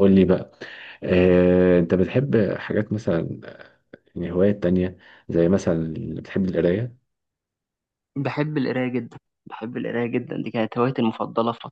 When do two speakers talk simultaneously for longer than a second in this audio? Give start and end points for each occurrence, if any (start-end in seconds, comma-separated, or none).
none